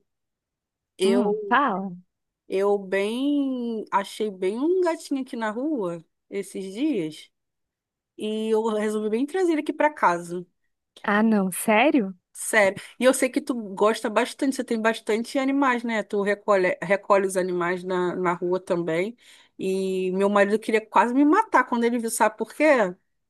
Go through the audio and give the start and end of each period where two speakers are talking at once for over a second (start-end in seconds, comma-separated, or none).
none